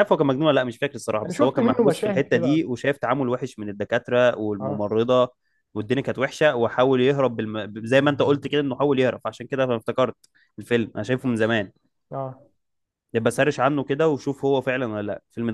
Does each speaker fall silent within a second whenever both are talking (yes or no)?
no